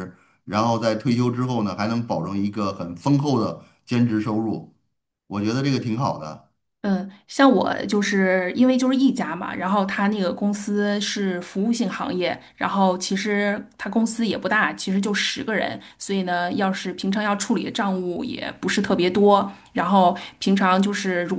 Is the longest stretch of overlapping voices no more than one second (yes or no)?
yes